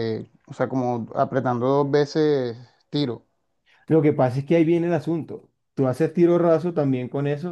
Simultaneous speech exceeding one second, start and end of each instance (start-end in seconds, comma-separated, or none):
none